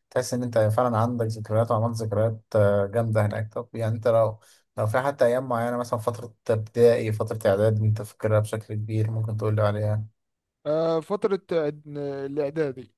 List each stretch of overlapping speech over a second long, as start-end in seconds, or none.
none